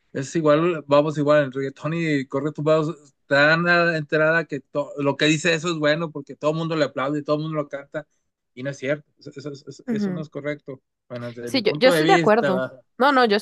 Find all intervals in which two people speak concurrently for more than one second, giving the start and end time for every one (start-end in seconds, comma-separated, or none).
11.4-12.8